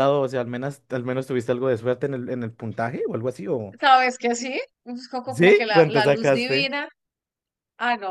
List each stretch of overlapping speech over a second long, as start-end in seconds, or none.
5.3-6.7